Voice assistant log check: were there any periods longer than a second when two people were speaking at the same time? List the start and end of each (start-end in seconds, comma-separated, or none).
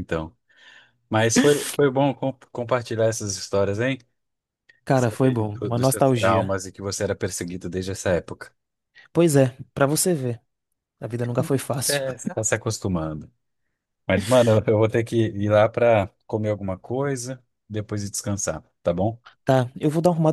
4.9-6.5